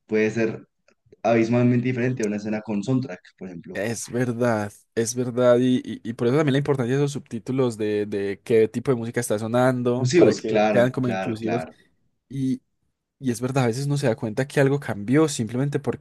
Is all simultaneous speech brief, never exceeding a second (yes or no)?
no